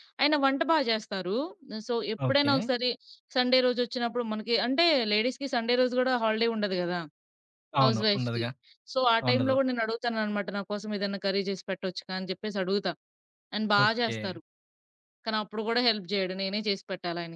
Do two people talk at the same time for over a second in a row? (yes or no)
no